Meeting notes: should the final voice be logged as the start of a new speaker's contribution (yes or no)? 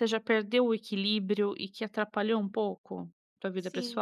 yes